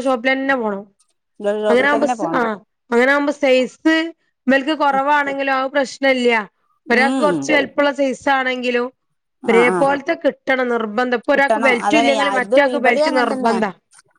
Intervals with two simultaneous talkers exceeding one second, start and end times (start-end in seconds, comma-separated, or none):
11.3-13.6